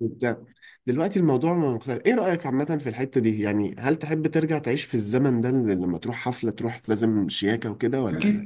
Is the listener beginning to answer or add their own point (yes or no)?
yes